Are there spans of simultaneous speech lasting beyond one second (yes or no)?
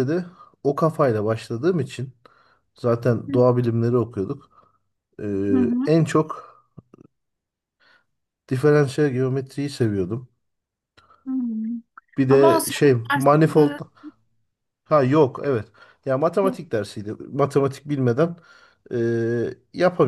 yes